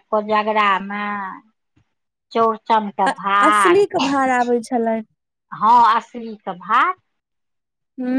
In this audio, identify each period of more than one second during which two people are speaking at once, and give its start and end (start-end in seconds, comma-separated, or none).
none